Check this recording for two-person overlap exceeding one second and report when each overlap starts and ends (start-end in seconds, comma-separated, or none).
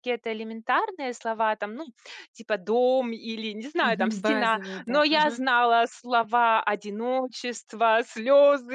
3.8-5.4